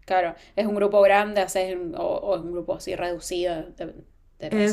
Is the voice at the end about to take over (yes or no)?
yes